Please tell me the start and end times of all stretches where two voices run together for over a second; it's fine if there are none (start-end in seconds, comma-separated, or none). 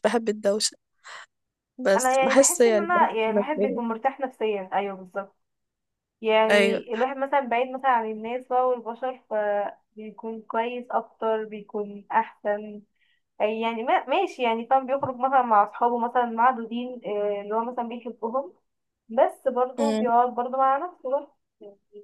1.9-3.8